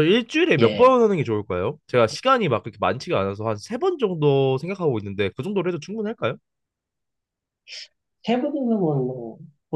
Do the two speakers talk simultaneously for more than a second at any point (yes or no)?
no